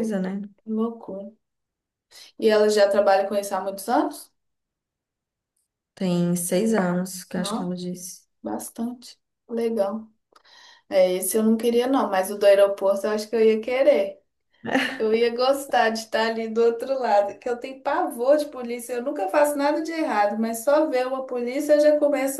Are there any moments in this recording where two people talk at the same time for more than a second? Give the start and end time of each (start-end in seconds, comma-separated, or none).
none